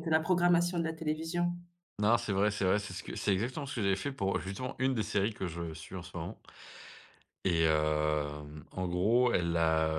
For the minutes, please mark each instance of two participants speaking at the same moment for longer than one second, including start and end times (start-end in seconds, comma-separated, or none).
none